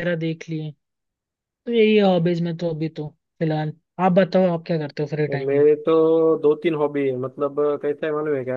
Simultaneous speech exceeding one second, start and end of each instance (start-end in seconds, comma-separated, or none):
none